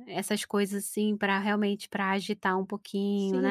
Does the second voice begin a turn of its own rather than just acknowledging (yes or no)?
yes